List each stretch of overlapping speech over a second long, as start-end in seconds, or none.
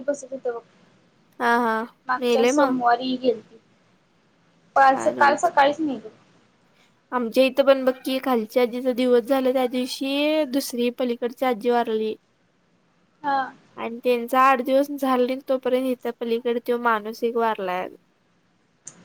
none